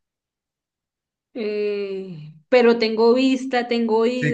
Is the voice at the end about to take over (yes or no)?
yes